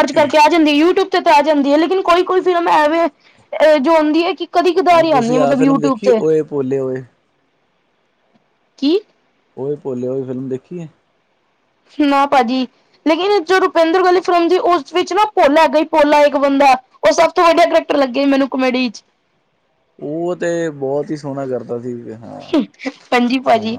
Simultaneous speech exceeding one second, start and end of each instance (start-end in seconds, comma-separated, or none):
4.9-6.2